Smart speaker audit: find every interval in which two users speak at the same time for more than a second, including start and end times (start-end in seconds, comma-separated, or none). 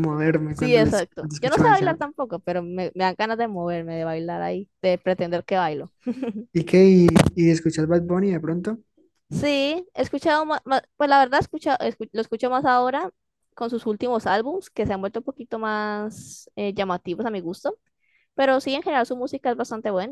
0.6-2.1